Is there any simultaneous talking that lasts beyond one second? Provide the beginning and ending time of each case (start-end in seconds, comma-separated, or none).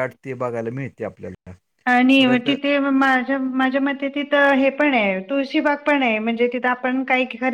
none